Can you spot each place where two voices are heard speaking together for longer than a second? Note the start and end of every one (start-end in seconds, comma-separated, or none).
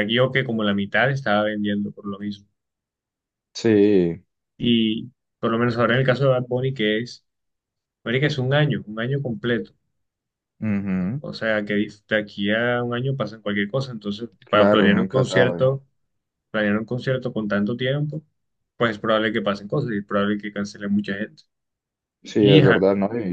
14.5-15.8